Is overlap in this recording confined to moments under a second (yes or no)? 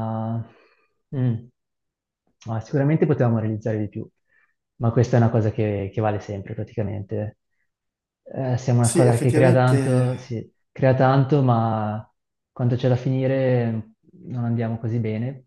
no